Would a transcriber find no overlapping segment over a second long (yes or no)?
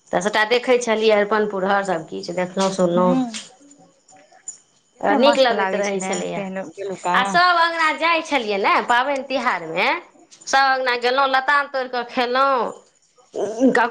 no